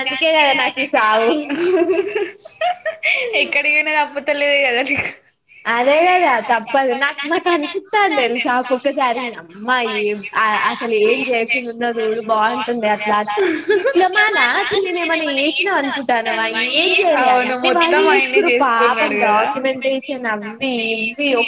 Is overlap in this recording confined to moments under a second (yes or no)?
no